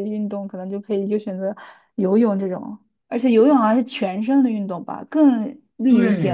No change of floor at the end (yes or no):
no